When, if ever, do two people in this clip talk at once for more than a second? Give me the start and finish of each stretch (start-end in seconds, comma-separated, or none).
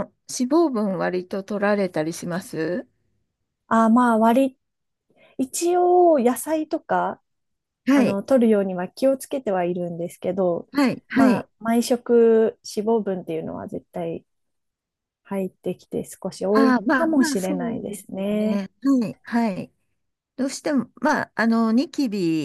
16.5-18.6